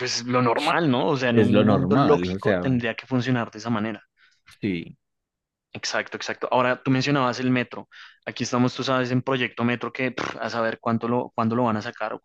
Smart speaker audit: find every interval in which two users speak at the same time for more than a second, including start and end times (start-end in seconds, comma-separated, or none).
1.3-2.6